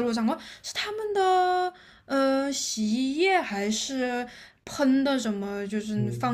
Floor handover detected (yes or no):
yes